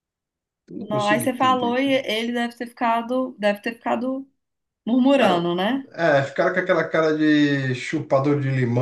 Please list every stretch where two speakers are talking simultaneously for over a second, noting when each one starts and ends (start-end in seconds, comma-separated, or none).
0.8-2.0